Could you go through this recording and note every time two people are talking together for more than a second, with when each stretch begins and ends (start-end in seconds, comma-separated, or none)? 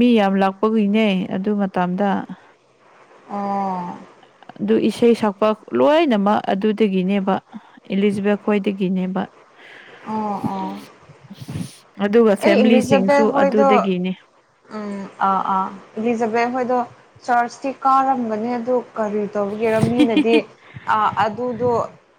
12.4-13.9